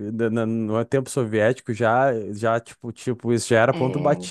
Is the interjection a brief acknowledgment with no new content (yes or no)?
yes